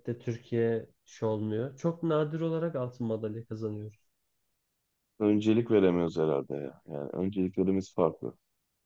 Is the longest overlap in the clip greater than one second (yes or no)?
no